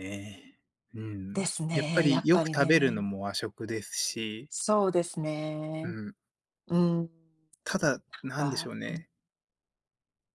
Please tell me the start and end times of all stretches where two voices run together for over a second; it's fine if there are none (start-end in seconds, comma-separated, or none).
1.3-3.1